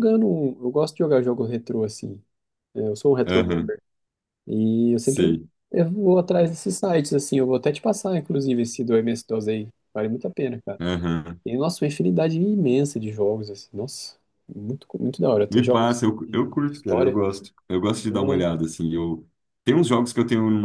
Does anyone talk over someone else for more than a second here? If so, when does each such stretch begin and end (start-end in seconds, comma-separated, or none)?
15.5-17.2